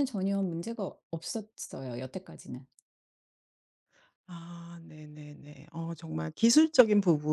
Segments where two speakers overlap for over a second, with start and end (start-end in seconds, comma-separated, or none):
none